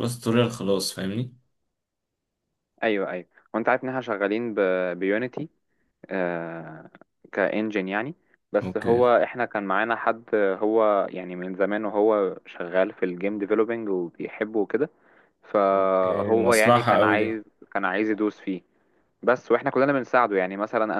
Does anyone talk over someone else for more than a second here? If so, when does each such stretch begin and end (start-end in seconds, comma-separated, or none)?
15.7-17.4